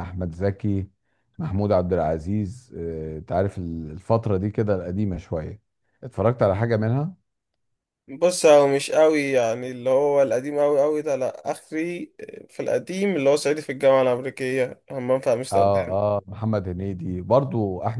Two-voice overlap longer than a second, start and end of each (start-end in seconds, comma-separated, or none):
none